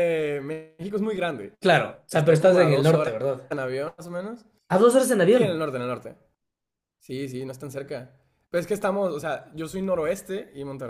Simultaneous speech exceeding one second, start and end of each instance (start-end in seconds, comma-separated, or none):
2.1-3.5